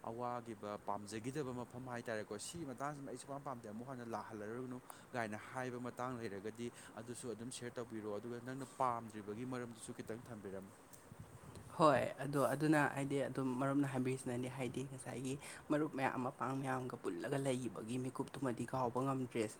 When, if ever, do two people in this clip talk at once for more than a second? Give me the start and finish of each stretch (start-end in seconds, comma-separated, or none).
none